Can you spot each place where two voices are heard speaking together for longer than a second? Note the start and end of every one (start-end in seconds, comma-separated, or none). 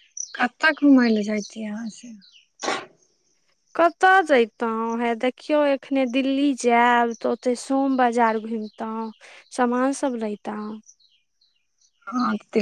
none